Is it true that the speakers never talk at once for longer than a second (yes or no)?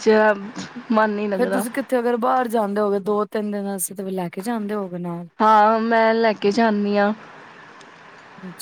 yes